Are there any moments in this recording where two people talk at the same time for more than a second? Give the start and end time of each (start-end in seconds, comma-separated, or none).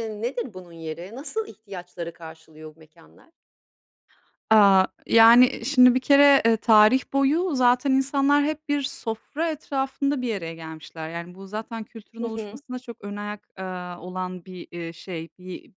none